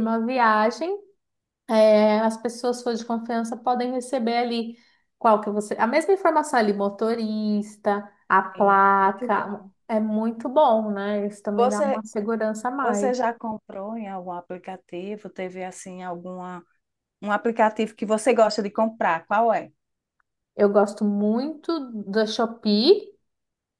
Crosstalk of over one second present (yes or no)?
yes